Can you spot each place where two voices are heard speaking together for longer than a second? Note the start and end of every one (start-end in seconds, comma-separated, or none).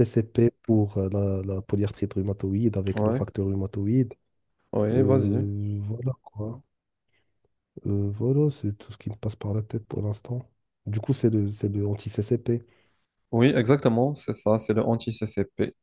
none